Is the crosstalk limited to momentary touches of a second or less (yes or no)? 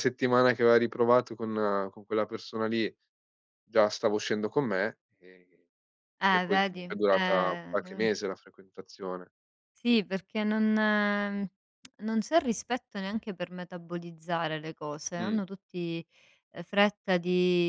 no